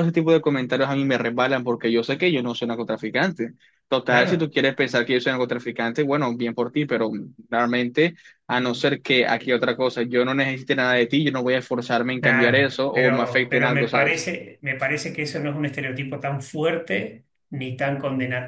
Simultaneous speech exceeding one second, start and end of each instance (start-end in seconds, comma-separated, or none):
12.2-14.3